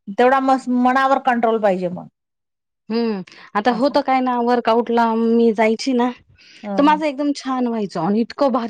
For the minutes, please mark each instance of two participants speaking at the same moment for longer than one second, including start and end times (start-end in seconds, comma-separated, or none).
none